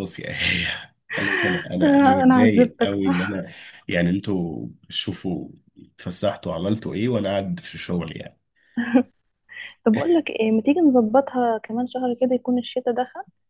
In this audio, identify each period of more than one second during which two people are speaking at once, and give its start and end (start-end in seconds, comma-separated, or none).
1.8-3.4